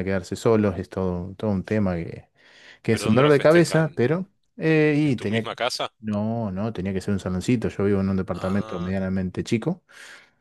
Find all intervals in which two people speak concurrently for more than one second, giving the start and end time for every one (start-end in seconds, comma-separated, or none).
2.9-4.3